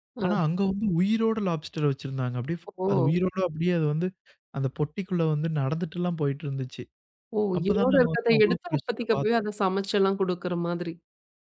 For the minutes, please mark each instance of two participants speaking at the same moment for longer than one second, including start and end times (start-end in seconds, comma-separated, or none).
7.6-9.4